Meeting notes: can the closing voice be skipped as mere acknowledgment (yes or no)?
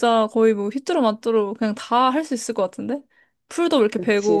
no